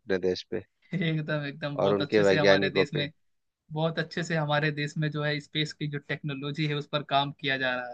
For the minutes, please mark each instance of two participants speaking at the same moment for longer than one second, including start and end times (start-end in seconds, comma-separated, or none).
1.8-3.1